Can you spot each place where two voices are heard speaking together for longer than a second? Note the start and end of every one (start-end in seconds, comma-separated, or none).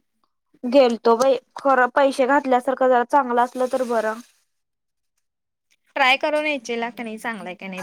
none